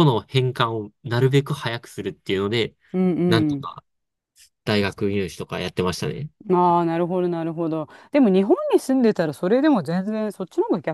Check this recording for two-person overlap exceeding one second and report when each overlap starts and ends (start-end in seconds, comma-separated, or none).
none